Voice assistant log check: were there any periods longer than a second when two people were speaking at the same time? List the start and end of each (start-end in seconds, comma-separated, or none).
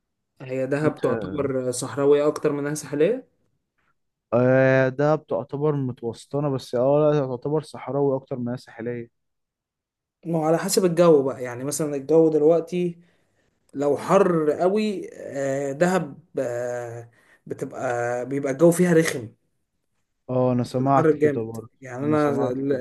20.8-22.3